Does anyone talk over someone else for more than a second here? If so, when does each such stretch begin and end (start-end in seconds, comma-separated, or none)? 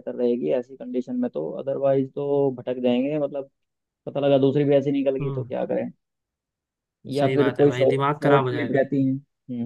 7.2-8.8